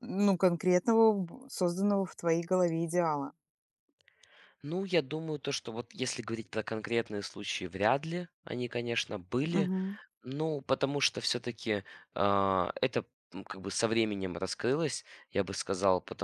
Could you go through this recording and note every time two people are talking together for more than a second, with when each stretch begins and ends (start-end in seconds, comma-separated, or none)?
none